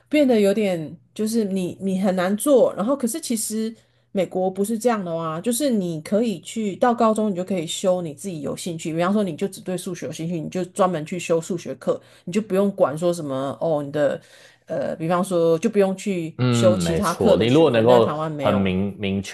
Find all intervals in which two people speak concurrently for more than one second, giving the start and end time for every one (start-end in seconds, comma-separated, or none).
16.4-18.7